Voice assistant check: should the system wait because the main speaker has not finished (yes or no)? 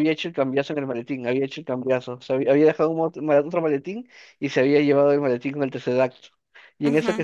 yes